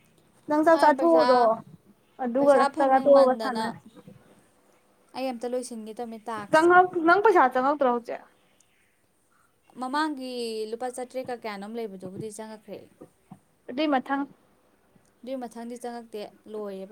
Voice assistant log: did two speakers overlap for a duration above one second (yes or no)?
yes